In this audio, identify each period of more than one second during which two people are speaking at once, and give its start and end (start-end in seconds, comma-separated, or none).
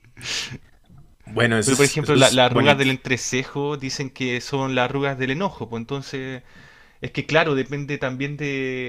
1.6-2.9